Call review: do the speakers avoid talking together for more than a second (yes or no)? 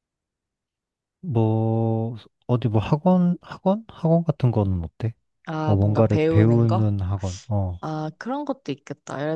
no